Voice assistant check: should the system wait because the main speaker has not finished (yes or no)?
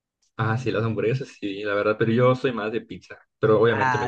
no